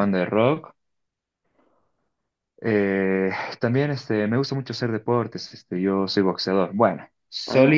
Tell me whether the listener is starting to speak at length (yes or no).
no